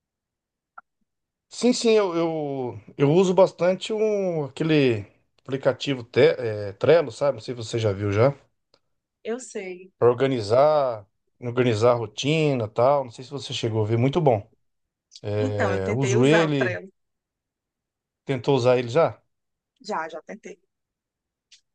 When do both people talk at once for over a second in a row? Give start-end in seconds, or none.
15.4-16.8